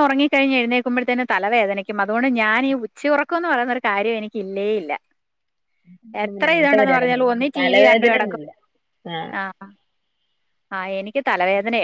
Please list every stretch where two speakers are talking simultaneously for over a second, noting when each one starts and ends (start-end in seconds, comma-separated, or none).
6.3-8.4